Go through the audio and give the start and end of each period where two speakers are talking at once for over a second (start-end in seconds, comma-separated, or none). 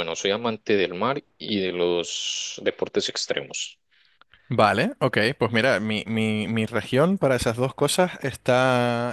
none